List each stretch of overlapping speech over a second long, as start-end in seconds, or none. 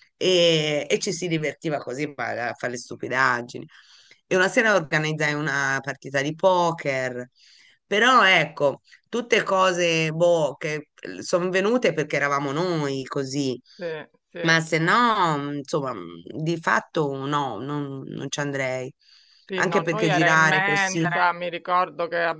19.6-21.3